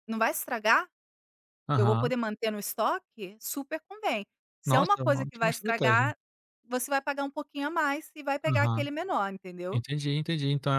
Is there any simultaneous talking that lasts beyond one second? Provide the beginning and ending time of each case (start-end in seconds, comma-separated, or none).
4.6-6.1